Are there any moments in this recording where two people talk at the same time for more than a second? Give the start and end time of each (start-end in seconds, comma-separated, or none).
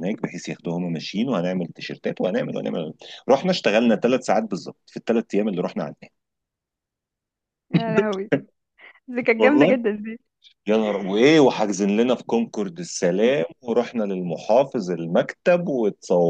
none